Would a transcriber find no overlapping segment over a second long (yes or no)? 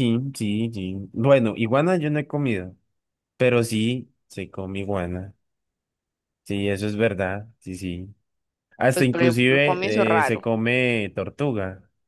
no